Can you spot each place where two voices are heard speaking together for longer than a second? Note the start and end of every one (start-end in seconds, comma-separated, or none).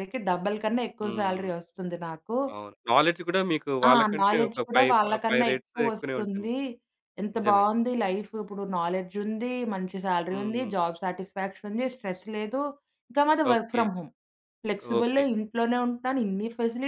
3.9-6.5